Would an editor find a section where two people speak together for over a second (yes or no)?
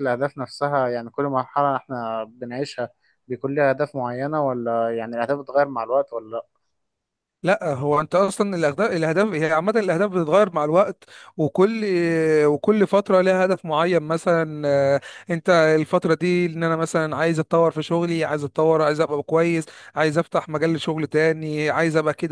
no